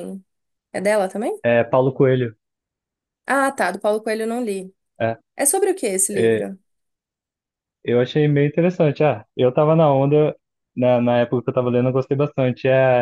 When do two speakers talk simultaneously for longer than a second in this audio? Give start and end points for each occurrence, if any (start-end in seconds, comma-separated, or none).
none